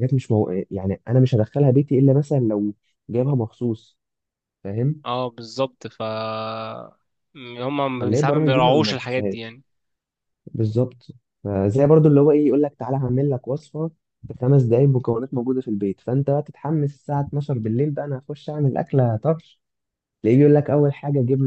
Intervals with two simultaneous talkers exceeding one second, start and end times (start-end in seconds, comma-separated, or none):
8.0-9.5